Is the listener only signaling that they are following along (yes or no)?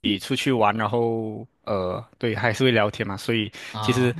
yes